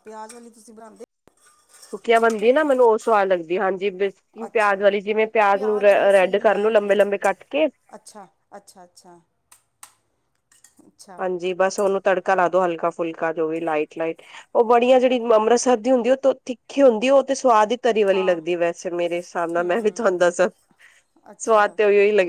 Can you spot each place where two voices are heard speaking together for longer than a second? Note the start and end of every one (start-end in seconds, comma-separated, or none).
5.5-7.0